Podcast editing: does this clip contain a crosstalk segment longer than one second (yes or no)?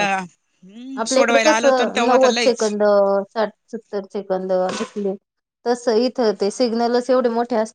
yes